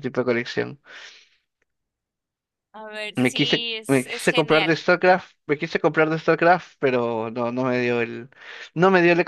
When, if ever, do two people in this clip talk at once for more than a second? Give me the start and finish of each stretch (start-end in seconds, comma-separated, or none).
3.2-4.8